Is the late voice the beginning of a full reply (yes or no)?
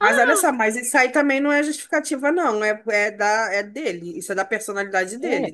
yes